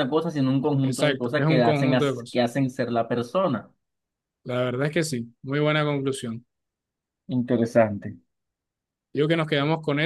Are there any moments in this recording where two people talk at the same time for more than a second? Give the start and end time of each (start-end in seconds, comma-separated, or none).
0.8-2.4